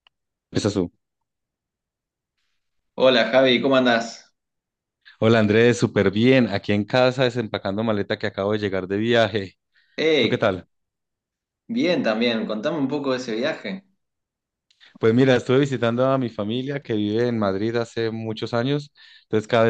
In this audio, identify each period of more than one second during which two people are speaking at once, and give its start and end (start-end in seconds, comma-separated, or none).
none